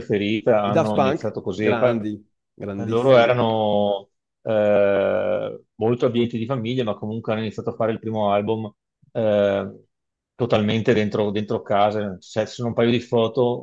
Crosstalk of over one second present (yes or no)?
yes